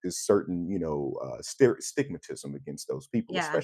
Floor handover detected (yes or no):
no